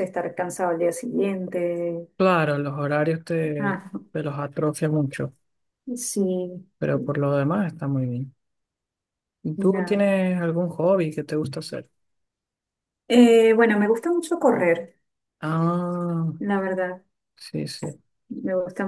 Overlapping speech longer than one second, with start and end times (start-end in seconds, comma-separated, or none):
none